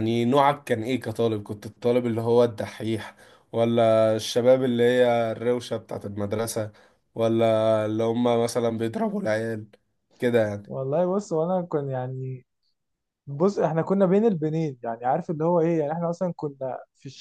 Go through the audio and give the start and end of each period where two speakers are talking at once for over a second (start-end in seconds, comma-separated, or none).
none